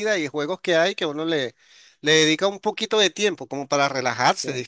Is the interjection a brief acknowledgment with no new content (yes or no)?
yes